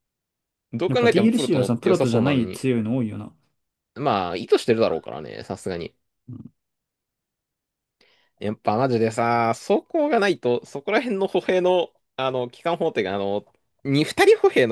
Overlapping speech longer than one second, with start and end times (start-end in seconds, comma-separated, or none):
0.9-2.6